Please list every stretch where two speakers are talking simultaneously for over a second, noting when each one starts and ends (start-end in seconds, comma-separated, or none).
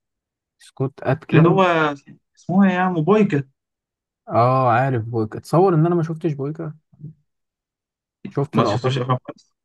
none